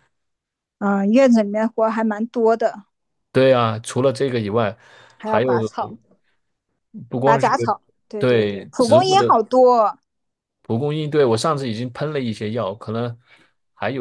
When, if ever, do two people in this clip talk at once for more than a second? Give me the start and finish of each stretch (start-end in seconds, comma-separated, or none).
8.2-9.4